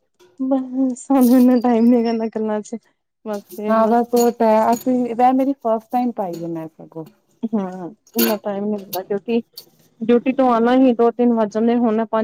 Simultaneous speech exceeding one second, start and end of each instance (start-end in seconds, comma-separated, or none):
none